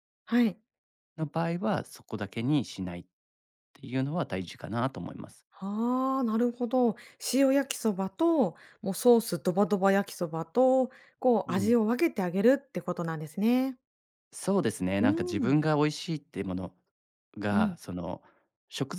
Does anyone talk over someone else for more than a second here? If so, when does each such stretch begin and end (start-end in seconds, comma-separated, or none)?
none